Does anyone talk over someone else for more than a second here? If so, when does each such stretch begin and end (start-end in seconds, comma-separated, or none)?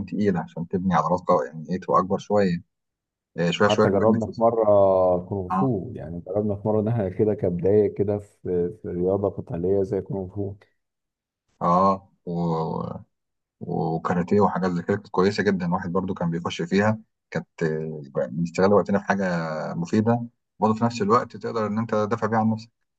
none